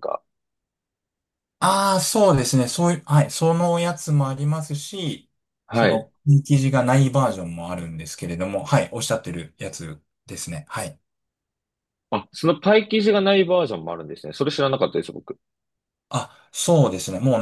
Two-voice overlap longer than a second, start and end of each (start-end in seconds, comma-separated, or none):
none